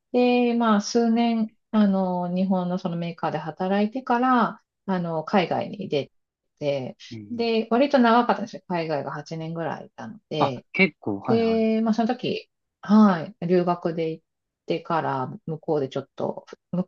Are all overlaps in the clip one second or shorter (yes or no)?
yes